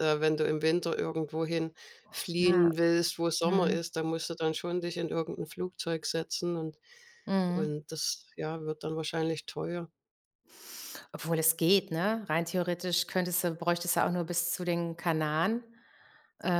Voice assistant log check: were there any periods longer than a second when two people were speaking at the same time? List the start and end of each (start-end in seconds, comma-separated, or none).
none